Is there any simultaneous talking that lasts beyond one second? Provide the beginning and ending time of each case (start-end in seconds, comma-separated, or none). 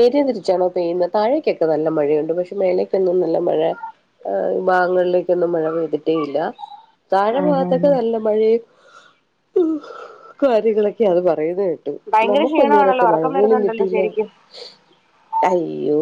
12.3-14.1